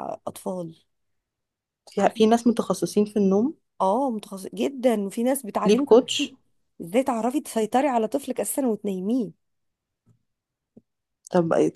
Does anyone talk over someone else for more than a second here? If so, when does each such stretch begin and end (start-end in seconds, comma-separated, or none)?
none